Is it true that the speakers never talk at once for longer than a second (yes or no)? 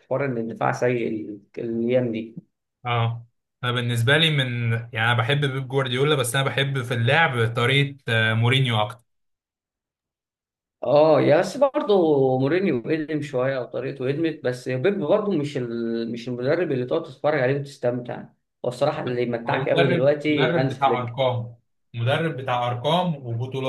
no